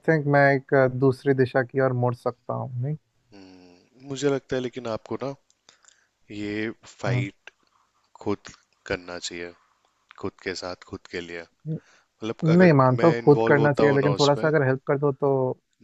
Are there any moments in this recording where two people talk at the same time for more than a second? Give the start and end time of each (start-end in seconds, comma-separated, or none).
12.4-14.5